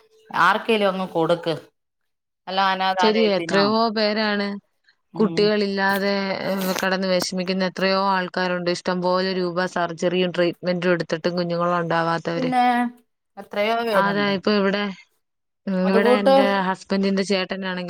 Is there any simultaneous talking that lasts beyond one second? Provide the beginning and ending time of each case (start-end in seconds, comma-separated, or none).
none